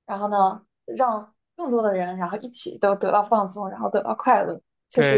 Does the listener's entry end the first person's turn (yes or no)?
yes